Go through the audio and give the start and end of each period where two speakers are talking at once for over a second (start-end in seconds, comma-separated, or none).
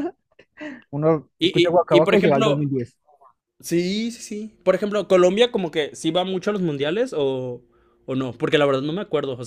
1.4-2.6